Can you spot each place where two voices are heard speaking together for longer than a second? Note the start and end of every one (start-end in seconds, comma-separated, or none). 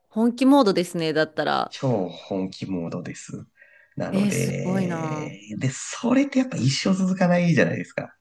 4.1-5.4